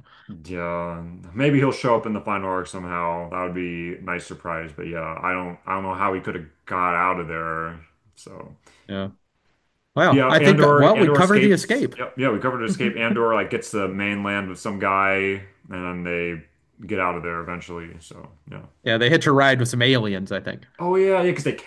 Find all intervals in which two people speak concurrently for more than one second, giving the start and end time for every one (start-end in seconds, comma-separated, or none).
10.1-11.9